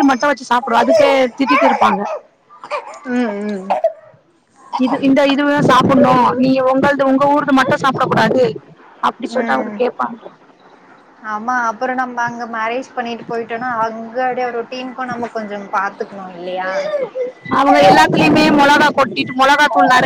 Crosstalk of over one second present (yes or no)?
no